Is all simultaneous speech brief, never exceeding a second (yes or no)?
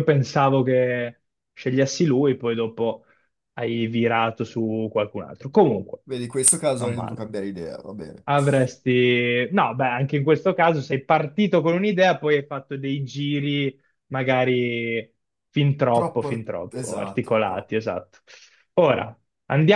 no